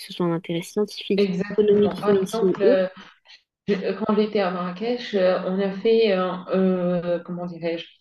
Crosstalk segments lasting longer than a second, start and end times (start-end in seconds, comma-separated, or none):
1.2-2.9